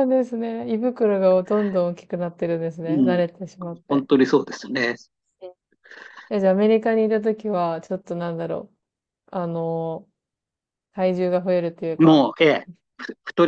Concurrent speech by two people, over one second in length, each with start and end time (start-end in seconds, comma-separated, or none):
none